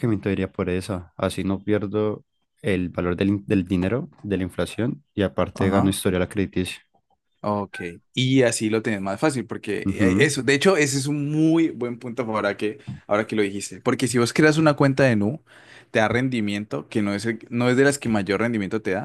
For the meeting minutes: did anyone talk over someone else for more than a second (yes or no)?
no